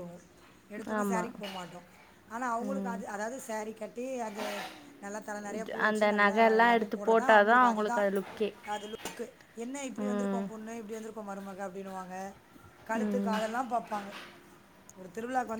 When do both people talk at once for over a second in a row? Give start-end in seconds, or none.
5.7-8.0